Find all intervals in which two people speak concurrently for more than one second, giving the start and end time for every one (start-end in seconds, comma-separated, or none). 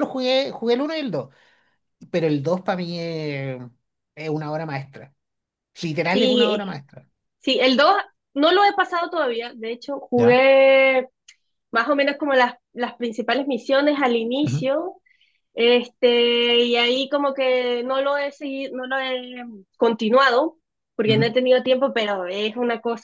none